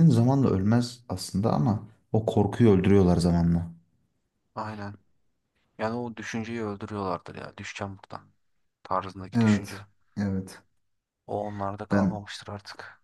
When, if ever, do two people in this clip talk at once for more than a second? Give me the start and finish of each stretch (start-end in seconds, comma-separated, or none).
none